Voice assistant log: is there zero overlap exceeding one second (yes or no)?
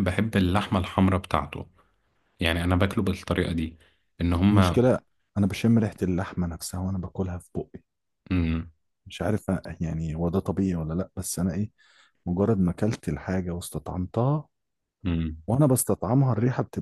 yes